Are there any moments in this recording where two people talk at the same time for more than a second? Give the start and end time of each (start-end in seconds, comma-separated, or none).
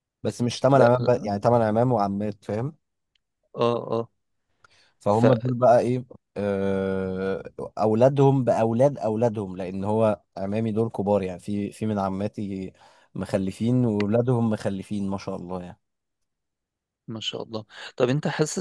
none